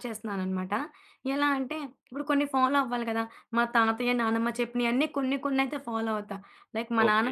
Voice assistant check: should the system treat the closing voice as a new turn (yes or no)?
yes